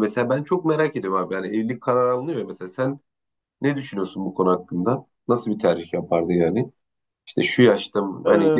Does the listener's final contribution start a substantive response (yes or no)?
no